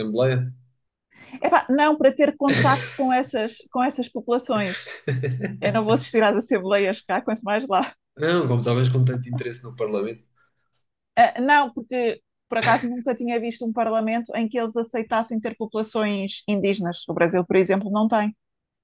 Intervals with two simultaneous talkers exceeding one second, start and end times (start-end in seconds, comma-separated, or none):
none